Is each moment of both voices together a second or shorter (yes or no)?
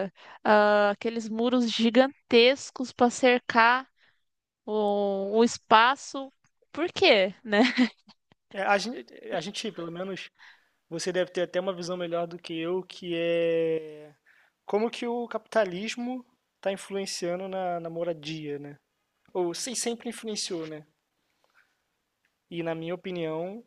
yes